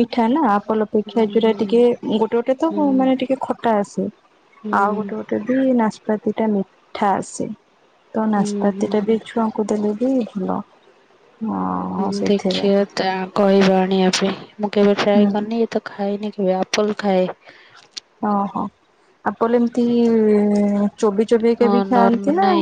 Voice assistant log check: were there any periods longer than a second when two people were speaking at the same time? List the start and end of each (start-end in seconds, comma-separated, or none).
none